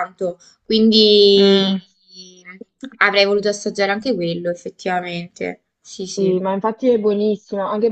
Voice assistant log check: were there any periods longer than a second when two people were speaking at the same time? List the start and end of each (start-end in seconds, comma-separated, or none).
none